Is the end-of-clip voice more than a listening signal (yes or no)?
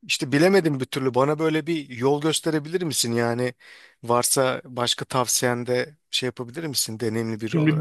yes